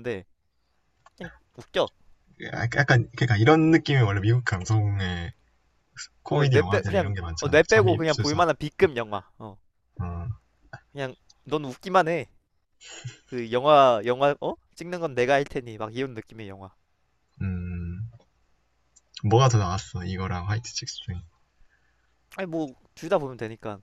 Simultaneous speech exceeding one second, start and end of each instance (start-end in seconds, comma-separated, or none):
6.3-8.4